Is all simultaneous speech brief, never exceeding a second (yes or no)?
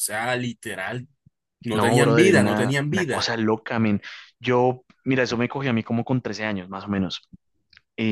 no